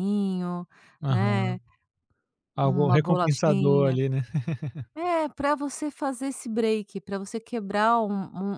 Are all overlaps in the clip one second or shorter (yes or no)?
no